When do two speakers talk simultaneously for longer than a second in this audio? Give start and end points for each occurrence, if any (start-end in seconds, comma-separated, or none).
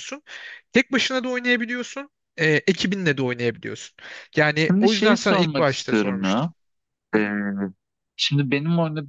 4.7-6.5